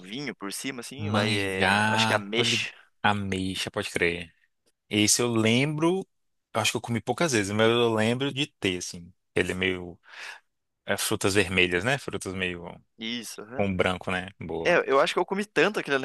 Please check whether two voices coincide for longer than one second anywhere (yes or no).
yes